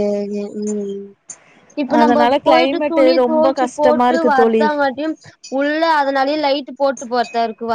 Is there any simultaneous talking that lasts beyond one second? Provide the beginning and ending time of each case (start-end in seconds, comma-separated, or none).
2.0-4.6